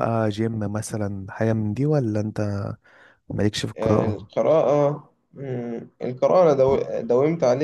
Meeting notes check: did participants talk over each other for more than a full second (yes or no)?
no